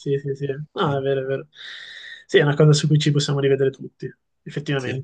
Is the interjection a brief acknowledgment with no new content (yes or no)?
yes